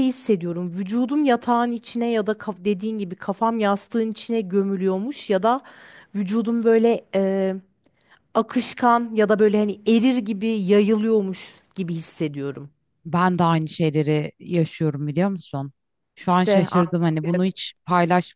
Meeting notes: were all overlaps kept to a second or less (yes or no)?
no